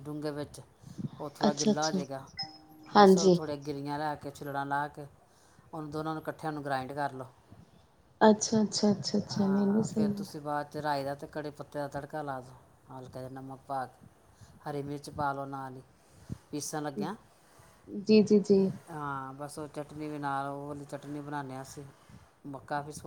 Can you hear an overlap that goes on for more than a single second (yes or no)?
no